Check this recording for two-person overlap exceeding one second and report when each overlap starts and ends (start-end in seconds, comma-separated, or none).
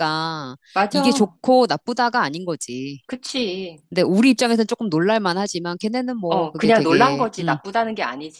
6.3-7.6